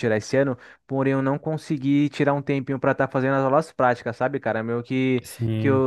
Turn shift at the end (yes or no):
no